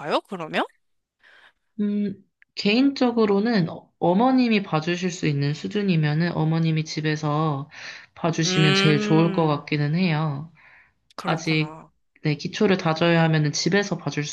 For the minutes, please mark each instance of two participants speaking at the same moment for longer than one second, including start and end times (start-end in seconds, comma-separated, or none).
8.4-9.7